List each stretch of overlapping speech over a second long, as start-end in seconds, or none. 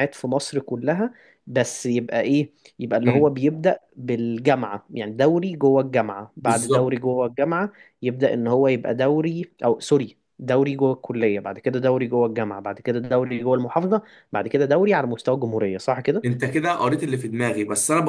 none